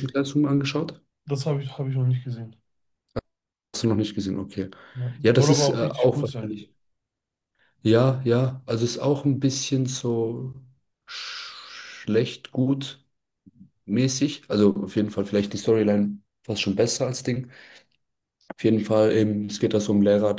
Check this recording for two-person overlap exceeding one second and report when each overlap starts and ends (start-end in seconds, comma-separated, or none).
5.2-6.6